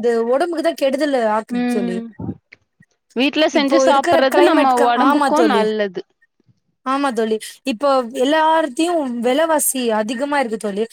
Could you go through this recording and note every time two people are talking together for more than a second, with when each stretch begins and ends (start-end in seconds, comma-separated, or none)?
3.6-5.6